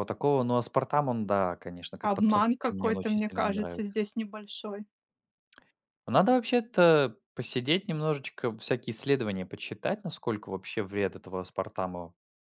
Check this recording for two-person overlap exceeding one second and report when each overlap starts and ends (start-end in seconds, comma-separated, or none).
2.0-4.0